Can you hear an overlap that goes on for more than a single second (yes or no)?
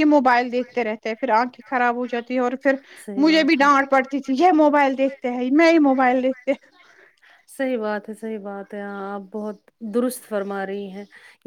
no